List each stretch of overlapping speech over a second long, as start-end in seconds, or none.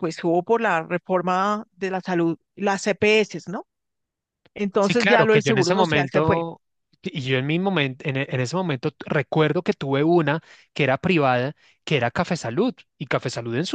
4.8-6.5